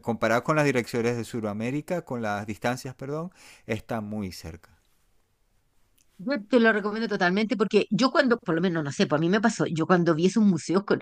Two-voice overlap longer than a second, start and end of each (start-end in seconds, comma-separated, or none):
none